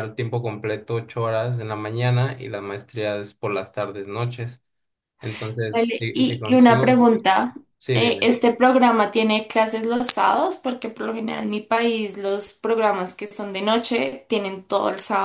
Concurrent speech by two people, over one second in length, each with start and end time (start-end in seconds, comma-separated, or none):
5.7-7.1